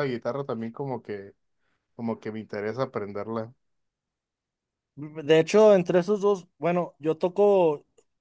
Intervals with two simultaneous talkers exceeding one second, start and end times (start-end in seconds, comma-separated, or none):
none